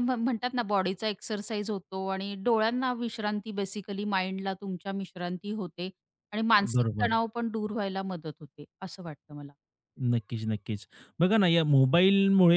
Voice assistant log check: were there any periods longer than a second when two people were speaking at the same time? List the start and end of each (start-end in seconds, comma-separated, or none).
none